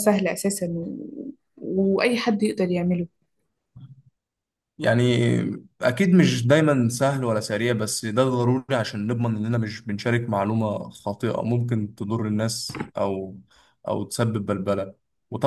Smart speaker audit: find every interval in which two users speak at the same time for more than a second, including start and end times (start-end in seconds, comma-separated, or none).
none